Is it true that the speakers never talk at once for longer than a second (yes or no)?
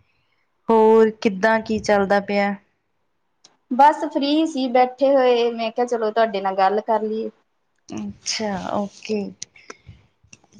yes